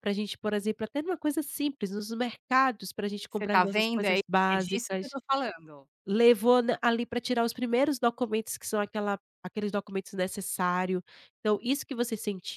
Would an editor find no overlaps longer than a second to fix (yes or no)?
no